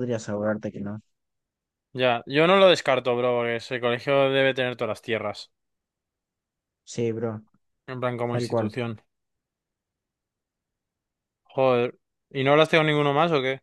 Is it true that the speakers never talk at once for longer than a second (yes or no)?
yes